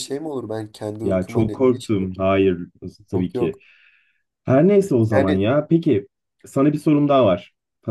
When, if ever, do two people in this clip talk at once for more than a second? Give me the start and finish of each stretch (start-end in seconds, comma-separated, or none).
1.0-2.4